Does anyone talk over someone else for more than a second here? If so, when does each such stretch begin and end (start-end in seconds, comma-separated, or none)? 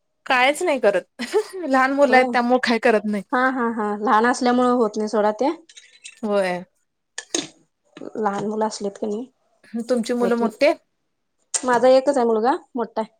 none